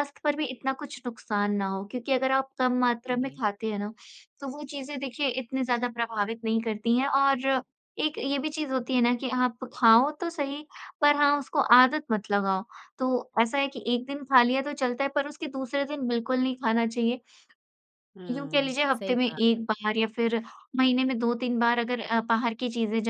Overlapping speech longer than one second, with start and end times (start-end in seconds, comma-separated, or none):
18.3-19.6